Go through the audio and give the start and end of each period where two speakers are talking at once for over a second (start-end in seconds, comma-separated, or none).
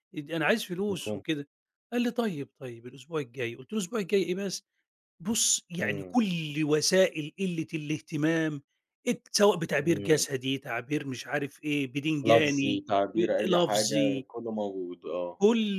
12.2-14.3